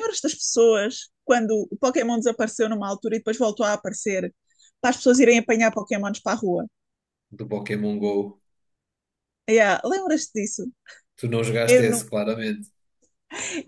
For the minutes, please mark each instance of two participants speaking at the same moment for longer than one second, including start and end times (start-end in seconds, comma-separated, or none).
none